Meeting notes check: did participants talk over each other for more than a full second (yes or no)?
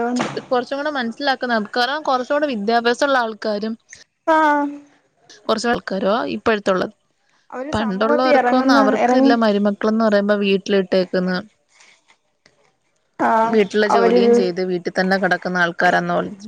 yes